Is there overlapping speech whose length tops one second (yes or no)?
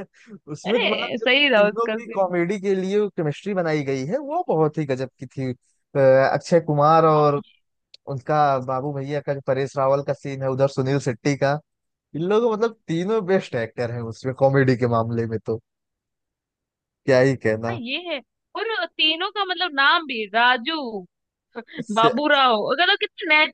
yes